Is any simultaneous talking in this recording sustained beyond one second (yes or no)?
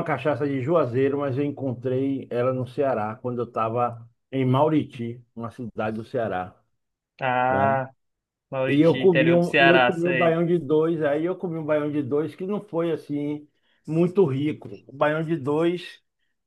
yes